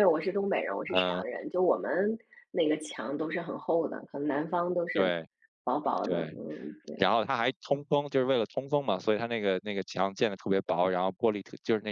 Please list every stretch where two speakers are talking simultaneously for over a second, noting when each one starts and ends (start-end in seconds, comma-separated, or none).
none